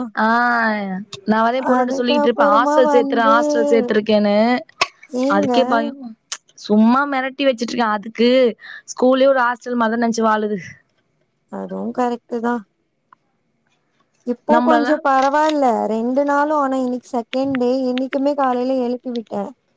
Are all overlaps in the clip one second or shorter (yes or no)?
no